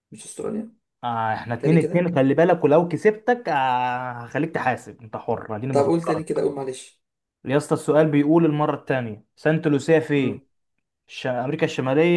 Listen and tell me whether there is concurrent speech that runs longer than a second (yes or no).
no